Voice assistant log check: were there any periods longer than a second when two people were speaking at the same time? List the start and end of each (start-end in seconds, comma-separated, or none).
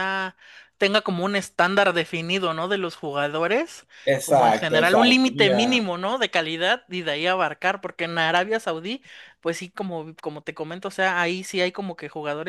4.0-5.9